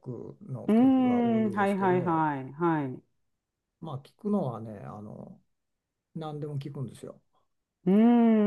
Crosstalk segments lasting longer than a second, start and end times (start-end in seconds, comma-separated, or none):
0.7-2.3